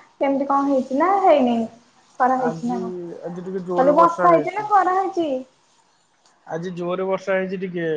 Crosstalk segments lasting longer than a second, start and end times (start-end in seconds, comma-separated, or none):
none